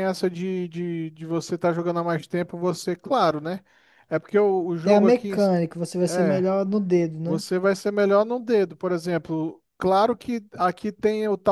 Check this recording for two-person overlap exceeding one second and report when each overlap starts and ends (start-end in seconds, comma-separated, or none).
none